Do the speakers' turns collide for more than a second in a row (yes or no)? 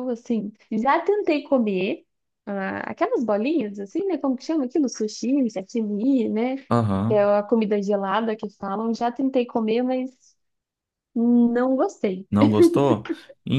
no